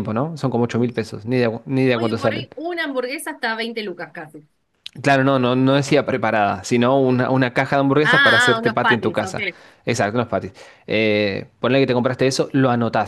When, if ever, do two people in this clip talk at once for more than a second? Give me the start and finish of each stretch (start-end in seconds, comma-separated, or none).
8.0-9.4